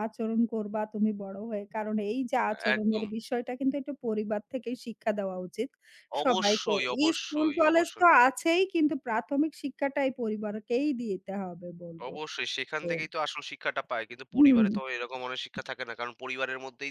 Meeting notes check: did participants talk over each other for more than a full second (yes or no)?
yes